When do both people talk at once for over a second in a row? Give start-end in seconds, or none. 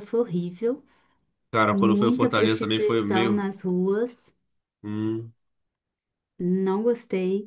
1.7-3.4